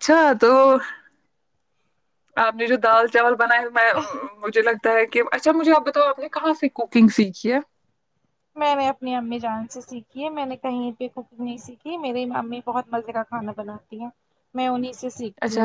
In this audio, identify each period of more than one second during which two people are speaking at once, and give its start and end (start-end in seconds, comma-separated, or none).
none